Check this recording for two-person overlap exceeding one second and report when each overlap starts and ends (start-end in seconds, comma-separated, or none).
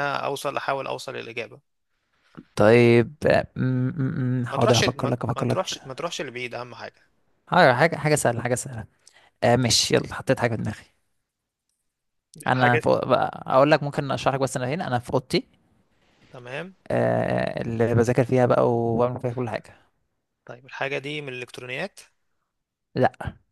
4.5-5.8